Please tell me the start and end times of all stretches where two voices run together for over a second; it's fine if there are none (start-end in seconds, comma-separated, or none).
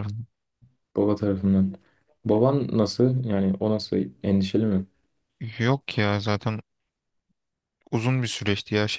none